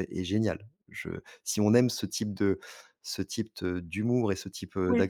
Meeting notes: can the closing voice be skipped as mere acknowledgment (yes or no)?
yes